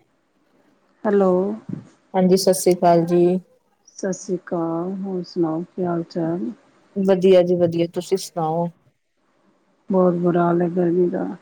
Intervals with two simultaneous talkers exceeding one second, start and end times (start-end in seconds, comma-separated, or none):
none